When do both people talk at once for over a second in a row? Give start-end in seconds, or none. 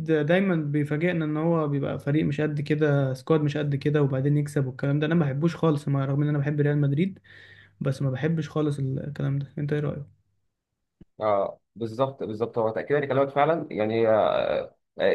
none